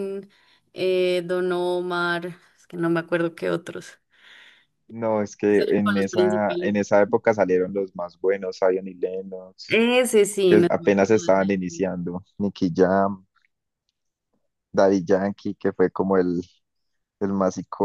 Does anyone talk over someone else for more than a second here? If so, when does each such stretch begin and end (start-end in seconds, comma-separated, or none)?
5.5-6.8, 10.5-11.9